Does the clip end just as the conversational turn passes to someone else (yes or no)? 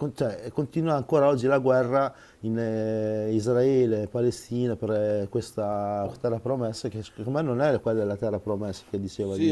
yes